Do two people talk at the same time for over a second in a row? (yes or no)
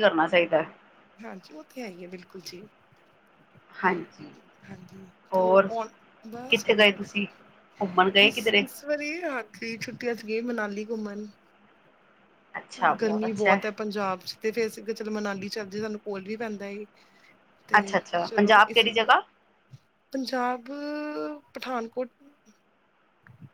no